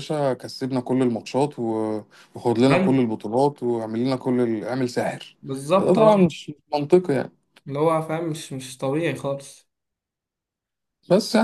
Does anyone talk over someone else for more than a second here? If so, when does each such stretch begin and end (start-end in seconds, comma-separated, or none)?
none